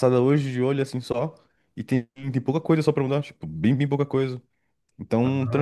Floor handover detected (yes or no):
no